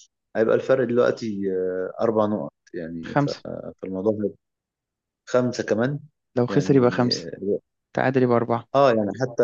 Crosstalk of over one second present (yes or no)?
no